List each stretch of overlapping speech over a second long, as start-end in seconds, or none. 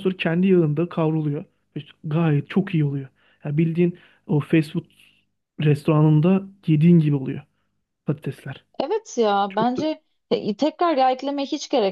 none